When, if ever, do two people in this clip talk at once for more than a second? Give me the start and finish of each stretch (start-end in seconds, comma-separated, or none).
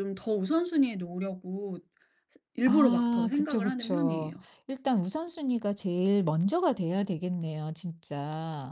2.6-4.3